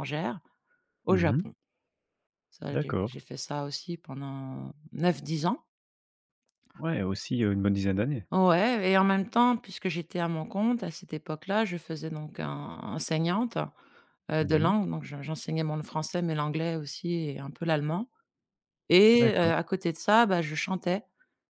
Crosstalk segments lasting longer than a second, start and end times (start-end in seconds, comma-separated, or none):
none